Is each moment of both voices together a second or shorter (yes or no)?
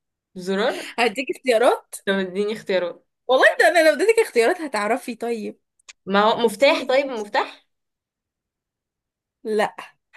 yes